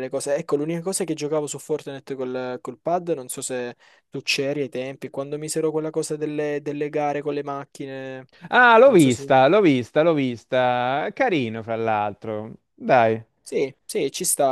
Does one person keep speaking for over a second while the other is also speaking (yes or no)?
no